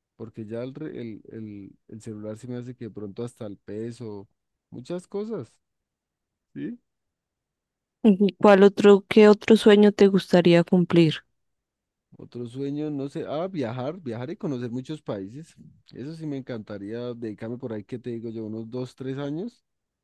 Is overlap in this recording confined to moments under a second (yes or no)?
yes